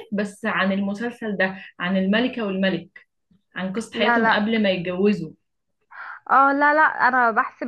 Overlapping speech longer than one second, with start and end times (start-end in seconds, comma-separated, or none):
none